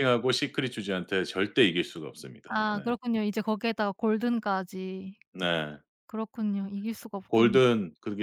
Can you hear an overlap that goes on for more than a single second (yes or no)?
no